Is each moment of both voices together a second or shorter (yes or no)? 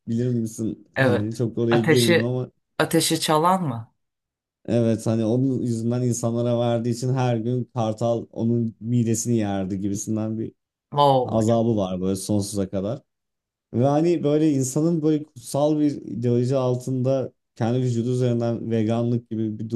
no